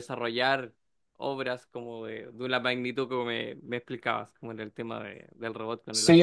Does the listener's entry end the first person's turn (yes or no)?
yes